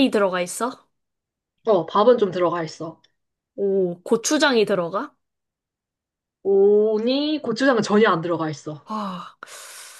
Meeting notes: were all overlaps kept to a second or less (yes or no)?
yes